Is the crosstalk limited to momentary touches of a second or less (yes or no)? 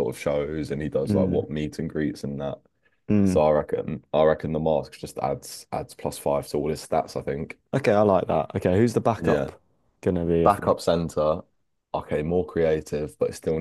yes